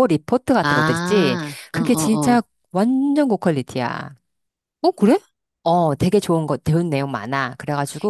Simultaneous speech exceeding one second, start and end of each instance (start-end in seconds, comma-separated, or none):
0.6-2.4